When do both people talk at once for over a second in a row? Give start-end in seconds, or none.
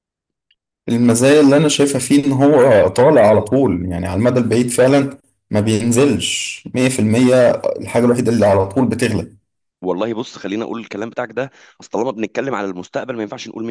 none